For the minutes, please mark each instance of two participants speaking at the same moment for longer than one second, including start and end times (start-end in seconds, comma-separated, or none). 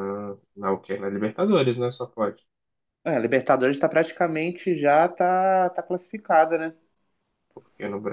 none